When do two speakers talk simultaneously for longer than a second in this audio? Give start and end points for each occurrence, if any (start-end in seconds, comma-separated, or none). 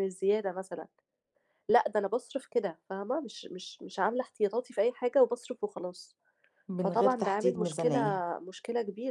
6.8-8.0